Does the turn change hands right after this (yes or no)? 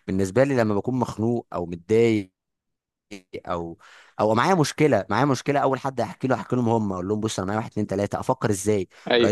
no